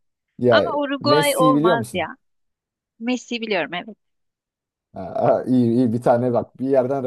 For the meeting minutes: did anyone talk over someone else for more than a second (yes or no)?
yes